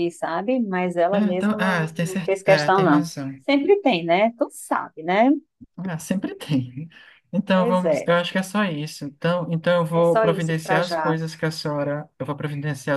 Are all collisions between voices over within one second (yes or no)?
no